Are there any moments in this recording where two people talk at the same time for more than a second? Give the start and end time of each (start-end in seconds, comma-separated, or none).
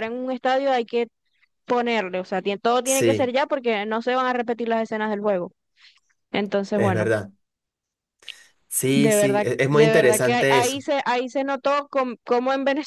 8.9-10.8